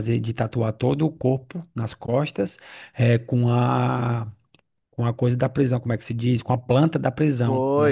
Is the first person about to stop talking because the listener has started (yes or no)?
yes